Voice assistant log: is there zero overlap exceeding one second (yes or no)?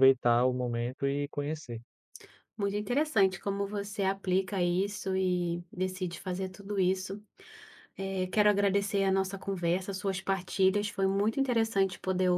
yes